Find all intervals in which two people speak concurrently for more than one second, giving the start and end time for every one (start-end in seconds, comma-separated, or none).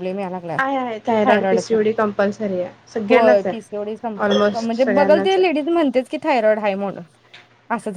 3.1-5.6